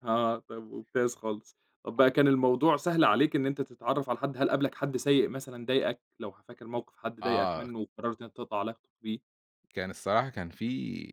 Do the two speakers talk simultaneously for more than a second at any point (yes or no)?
no